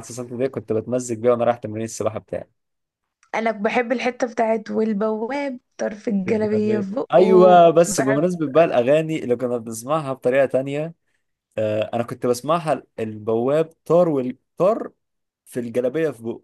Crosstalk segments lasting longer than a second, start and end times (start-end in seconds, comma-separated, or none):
6.2-8.2